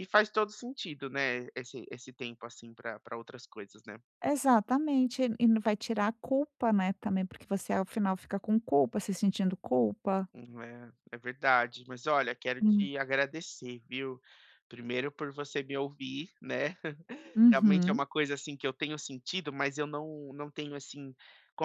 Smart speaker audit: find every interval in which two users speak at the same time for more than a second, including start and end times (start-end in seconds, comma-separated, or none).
none